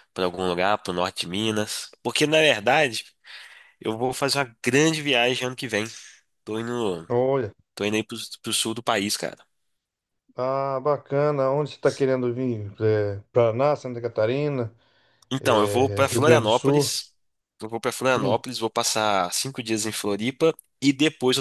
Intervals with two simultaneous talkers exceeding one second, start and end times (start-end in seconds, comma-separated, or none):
15.4-16.9